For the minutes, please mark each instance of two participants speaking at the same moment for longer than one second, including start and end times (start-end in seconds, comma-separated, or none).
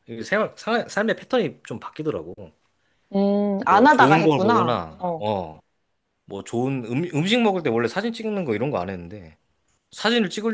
3.7-5.2